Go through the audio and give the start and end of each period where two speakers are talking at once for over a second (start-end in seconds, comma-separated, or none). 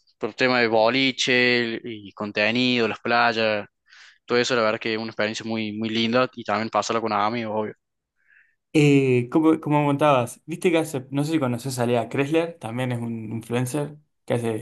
none